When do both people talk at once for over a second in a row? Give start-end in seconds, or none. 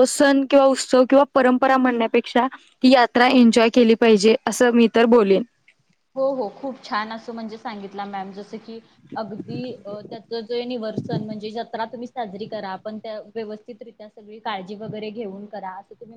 none